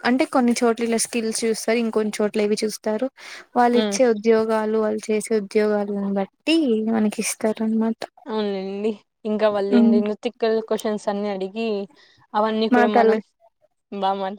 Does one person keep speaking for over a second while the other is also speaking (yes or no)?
no